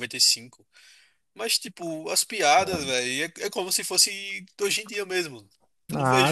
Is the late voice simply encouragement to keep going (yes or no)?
yes